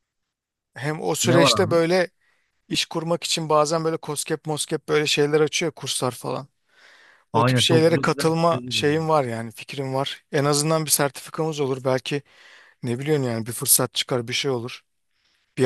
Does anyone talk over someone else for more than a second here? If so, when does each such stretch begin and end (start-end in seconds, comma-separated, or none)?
7.3-9.1